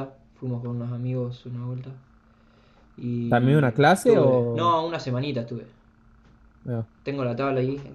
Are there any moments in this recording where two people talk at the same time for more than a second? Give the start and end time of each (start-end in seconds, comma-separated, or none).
3.3-4.8